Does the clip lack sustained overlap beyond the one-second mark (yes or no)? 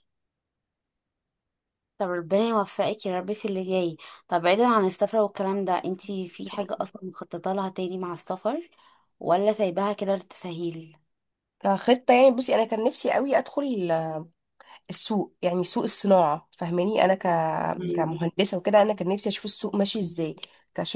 yes